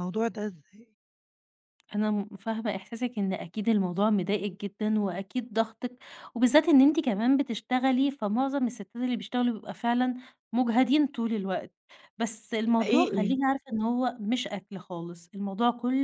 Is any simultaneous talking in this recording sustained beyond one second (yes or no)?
no